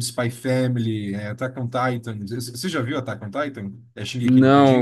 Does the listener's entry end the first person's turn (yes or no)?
yes